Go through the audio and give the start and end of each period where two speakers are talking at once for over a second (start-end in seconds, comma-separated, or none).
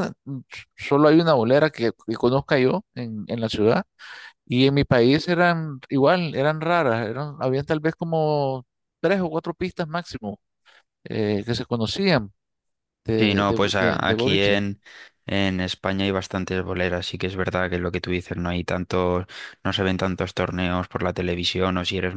13.2-14.6